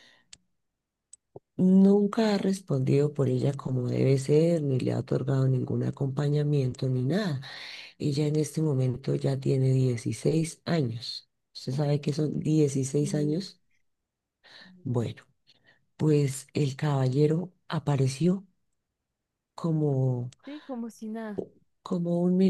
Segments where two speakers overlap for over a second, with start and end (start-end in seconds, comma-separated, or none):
none